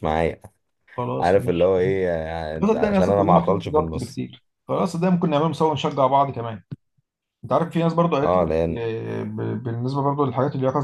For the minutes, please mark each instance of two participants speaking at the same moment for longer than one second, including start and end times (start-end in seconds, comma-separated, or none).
2.6-4.2